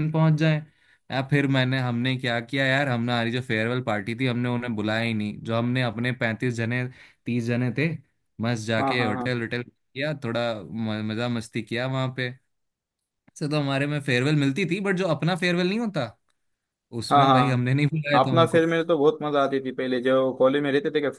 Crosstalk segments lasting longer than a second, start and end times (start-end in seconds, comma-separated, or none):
none